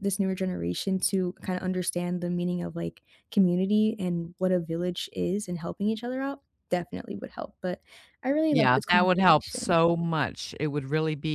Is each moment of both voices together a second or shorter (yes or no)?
no